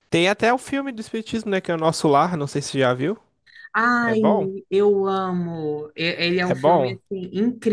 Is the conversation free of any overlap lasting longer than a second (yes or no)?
yes